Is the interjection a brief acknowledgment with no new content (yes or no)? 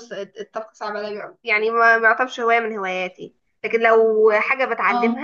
yes